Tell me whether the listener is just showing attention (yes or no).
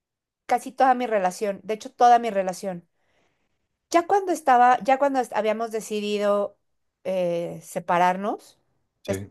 yes